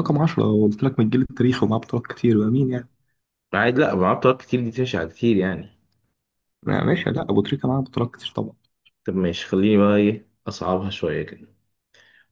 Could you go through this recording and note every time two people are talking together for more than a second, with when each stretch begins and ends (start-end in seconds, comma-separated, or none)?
none